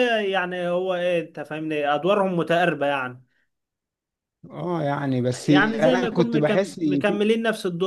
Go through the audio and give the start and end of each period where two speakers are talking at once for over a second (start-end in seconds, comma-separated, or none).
5.3-7.2